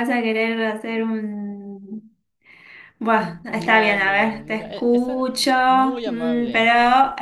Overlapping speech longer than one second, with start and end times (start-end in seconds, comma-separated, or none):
3.5-5.2